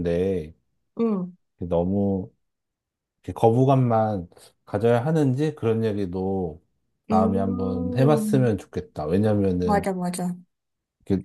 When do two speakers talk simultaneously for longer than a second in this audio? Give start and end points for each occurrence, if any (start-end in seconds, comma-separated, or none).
7.1-8.5